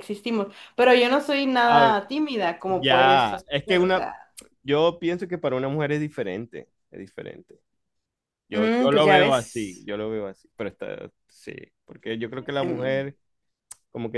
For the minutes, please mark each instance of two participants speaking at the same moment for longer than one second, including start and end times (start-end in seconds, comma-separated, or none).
2.7-4.0, 8.5-9.9